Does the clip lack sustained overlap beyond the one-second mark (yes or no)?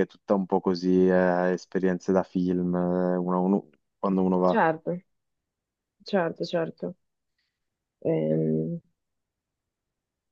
yes